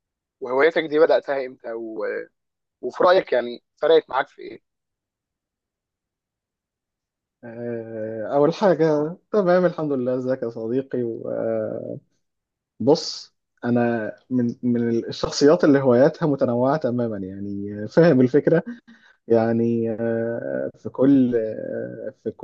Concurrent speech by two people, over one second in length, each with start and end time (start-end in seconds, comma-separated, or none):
none